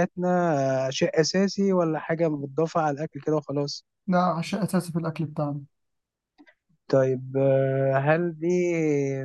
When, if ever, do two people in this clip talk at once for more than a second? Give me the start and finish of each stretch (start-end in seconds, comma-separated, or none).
none